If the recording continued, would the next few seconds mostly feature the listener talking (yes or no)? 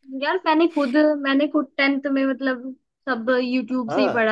yes